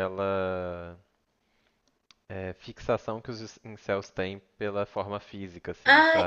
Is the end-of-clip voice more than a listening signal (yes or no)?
yes